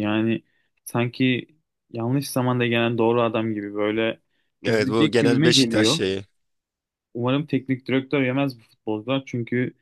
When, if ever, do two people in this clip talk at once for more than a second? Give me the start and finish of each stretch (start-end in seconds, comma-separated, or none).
4.7-6.0